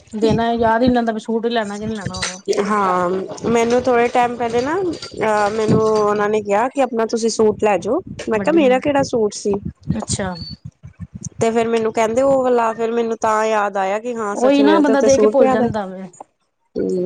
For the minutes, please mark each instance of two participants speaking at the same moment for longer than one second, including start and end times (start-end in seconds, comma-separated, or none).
14.4-16.1